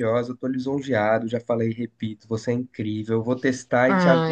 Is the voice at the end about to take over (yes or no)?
yes